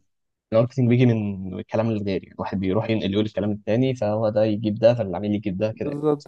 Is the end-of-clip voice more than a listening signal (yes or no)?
yes